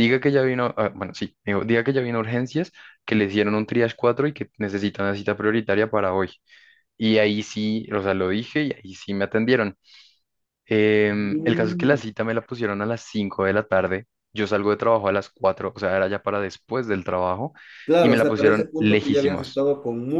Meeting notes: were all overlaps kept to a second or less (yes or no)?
no